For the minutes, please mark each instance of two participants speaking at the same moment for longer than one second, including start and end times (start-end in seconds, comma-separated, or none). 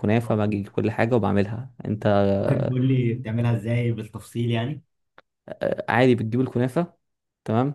none